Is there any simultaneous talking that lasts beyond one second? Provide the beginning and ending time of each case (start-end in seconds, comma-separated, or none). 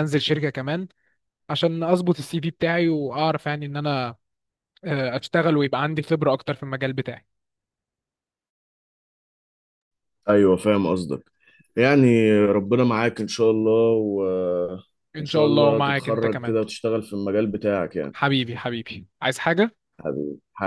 15.1-16.5